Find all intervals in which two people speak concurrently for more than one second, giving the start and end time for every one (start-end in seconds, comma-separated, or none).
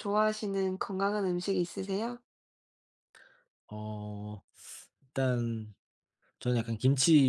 none